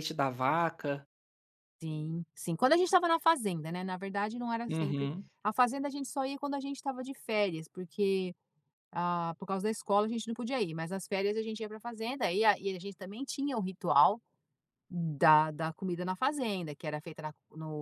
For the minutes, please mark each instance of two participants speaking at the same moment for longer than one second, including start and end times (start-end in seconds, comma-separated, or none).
none